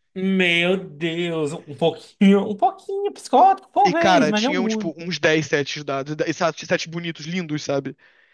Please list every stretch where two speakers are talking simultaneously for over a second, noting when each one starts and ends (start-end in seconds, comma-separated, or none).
3.9-5.1